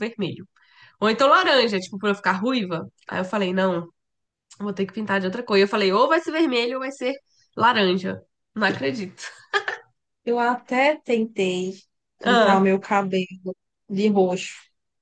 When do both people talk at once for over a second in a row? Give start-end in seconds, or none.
none